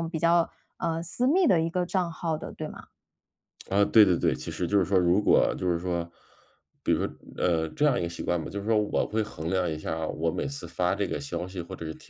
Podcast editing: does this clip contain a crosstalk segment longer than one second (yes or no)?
no